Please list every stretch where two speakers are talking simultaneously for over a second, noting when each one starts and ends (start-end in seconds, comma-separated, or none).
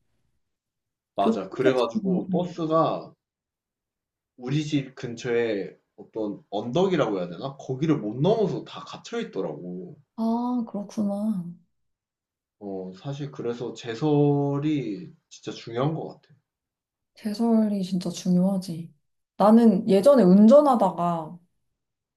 1.2-2.5